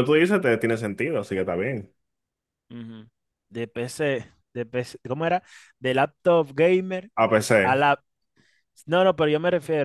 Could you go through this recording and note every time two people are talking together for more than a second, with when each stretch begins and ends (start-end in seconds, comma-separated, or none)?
none